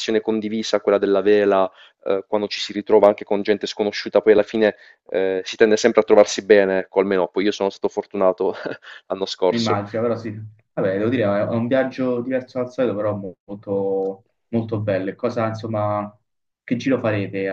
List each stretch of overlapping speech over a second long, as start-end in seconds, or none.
none